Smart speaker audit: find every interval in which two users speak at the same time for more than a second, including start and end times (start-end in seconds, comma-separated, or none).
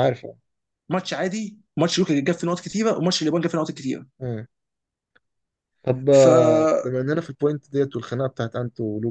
none